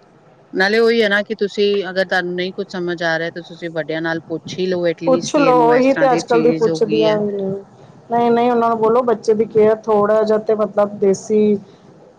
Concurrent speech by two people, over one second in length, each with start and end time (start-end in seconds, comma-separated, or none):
5.0-7.2